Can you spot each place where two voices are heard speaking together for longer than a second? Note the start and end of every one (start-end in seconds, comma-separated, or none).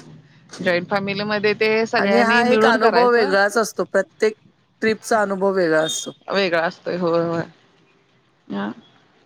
2.0-3.3